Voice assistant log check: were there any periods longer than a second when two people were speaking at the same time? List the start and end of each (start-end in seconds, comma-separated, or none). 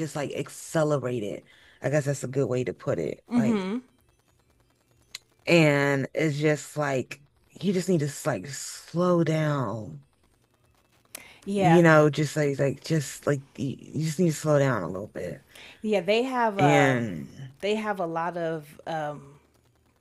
none